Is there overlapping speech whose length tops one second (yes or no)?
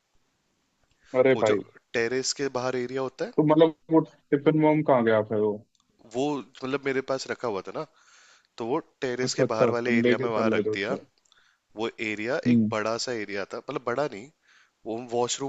yes